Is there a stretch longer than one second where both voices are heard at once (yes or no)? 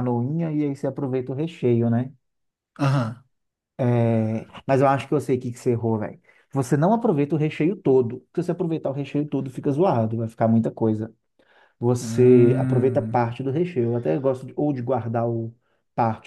yes